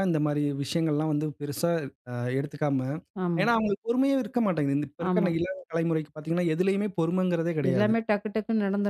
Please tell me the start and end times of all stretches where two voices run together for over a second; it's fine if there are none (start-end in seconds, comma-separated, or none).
none